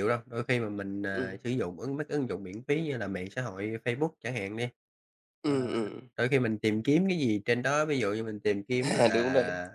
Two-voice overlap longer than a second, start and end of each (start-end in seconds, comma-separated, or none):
none